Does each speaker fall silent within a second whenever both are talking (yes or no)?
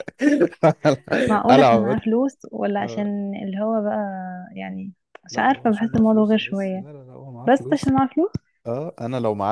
no